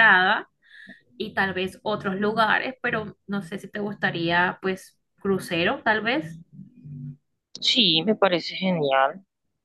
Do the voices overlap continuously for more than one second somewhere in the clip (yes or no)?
no